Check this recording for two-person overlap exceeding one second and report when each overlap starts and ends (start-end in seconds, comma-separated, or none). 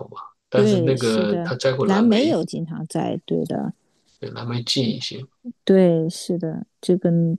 0.5-2.4